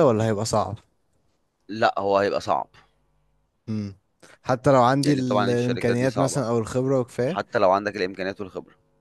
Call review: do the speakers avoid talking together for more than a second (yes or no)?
no